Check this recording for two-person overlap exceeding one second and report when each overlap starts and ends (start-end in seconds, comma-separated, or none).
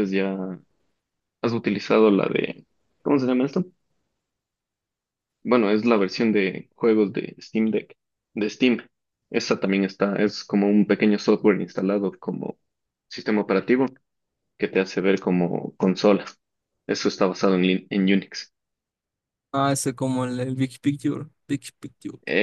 none